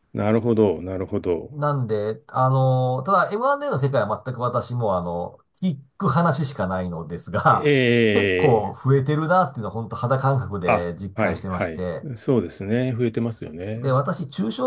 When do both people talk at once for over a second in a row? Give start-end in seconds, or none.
10.7-12.1